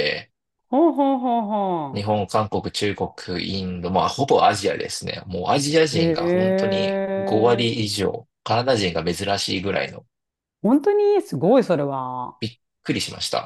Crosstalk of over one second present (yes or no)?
no